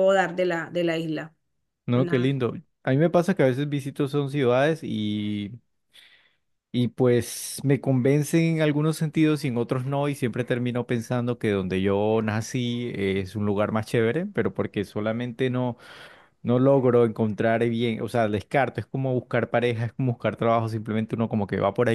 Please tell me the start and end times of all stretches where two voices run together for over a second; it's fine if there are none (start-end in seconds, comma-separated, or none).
none